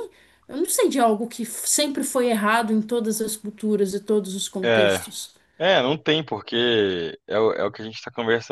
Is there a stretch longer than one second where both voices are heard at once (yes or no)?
no